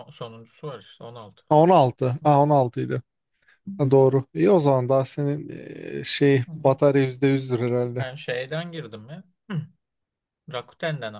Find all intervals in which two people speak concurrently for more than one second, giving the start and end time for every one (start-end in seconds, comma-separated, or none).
none